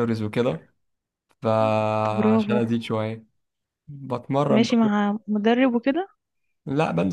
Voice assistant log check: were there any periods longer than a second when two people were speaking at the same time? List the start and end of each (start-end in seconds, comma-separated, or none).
none